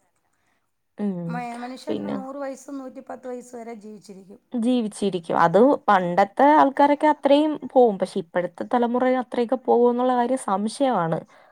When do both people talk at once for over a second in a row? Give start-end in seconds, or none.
none